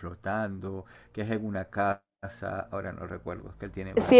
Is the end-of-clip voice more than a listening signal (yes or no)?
yes